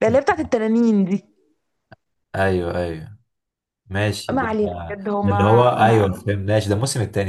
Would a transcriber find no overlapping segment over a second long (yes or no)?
no